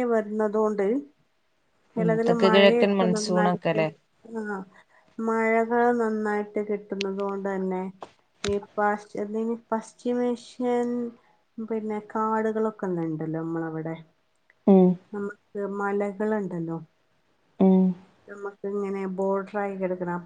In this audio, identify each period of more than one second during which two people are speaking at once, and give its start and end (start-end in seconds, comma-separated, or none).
2.0-3.8